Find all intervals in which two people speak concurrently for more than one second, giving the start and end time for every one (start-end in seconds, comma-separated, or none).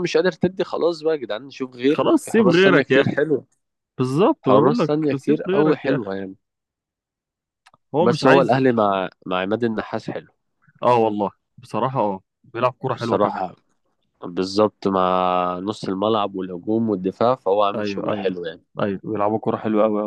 1.9-3.2, 4.4-6.1